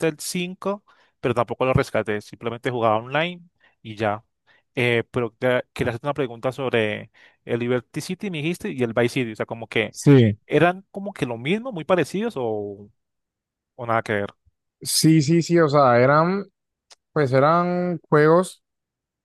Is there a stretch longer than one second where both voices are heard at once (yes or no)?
no